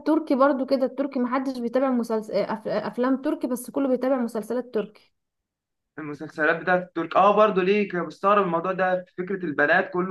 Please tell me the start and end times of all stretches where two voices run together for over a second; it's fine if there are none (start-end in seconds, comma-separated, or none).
none